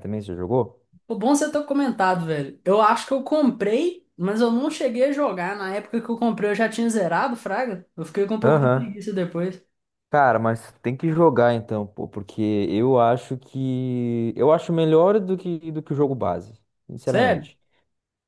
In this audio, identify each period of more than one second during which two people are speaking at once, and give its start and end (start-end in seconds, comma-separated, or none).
none